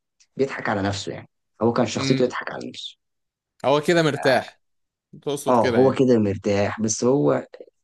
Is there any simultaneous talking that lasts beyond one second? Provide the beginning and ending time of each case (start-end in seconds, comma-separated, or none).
none